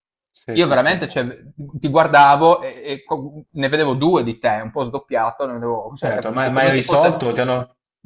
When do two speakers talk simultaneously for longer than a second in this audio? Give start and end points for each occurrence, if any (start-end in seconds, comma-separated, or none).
6.0-7.2